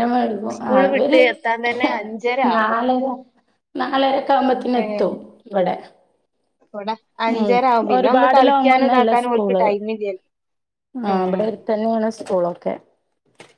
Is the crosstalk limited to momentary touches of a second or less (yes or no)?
no